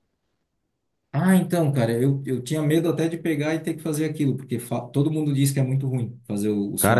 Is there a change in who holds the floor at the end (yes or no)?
yes